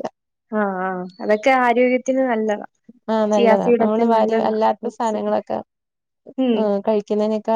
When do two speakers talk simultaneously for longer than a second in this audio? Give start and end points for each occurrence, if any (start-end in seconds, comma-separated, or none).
3.3-5.2